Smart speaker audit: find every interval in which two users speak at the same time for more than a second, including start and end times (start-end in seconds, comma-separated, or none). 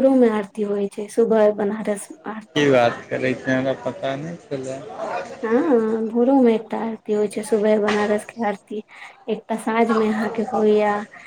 none